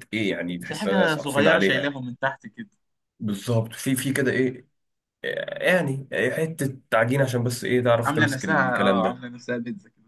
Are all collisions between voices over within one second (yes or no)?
no